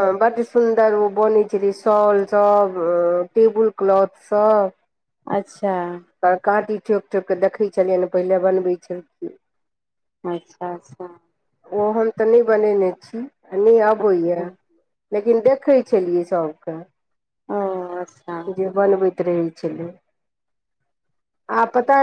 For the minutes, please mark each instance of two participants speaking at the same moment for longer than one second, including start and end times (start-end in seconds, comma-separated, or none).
none